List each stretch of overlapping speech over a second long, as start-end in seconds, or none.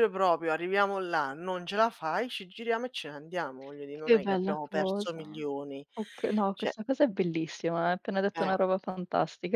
3.9-5.4